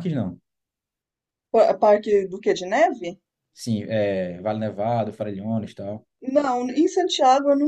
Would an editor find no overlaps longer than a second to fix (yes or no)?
yes